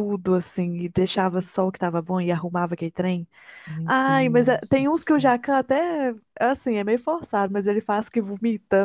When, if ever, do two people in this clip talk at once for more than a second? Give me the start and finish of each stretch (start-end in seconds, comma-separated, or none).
3.8-5.4